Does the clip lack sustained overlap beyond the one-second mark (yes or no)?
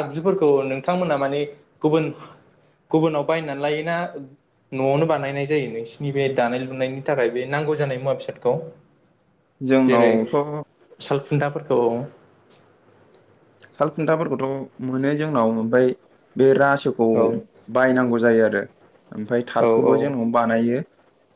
yes